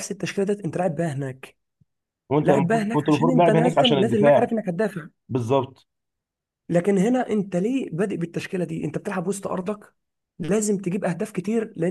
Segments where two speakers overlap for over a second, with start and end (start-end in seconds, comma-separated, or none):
2.4-4.5